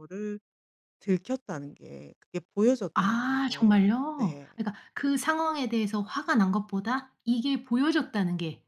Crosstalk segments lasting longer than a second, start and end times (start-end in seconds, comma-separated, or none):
3.0-4.5